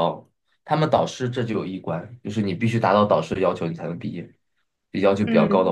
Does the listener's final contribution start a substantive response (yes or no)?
no